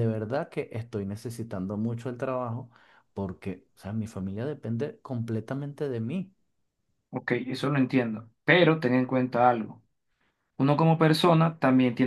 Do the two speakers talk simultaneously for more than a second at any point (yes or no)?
no